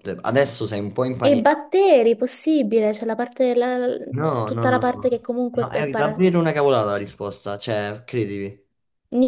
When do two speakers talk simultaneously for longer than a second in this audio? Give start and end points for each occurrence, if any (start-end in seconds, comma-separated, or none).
4.4-6.2